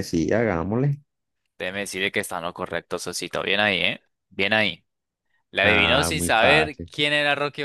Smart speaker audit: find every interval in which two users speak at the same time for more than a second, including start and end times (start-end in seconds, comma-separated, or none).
5.6-6.9